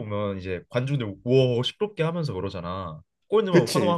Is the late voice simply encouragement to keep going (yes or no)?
yes